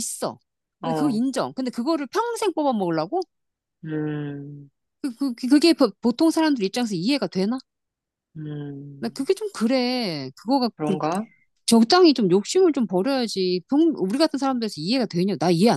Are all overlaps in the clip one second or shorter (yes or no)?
yes